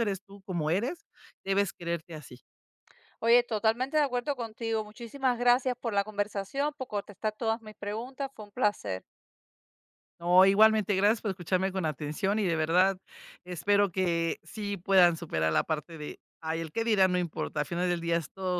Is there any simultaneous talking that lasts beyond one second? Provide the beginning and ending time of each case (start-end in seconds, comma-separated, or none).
none